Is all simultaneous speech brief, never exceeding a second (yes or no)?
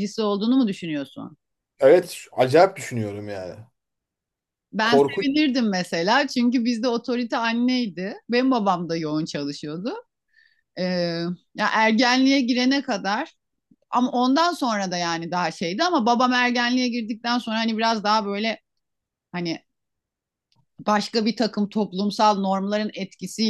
yes